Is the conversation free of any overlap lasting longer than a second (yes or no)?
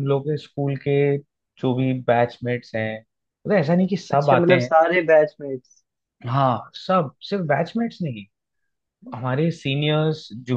yes